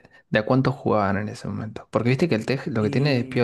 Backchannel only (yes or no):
yes